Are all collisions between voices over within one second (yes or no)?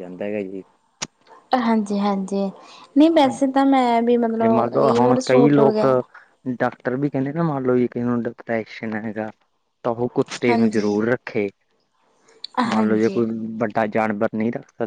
no